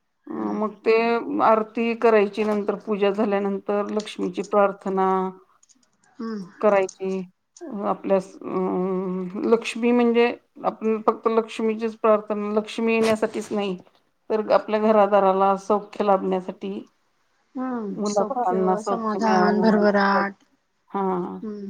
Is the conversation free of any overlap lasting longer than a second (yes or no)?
no